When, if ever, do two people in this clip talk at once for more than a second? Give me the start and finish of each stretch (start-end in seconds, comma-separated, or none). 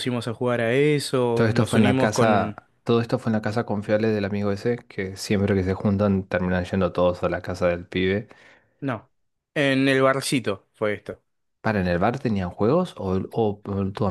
1.3-2.6